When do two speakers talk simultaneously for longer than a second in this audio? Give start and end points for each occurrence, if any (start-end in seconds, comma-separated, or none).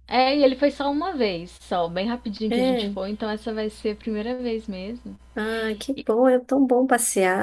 none